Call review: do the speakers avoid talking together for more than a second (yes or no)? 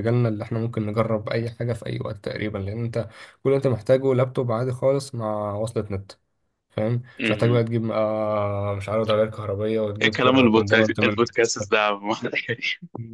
no